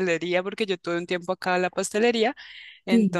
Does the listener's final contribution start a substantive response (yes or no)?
no